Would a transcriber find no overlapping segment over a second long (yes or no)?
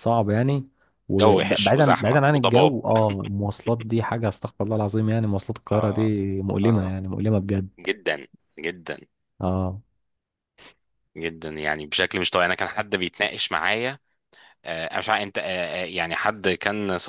no